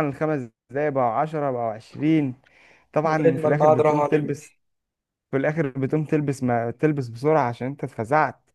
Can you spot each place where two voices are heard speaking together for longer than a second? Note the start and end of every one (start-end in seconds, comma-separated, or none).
3.0-4.5